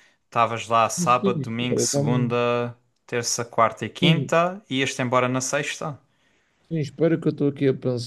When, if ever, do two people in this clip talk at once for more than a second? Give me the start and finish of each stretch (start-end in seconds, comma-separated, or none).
0.8-2.4